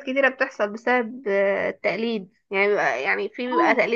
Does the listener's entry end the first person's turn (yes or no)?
no